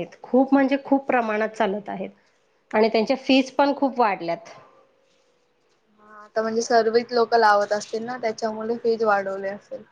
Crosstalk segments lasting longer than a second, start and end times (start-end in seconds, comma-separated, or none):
none